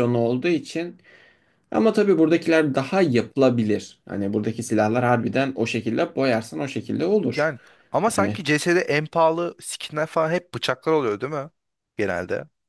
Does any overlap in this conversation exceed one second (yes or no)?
no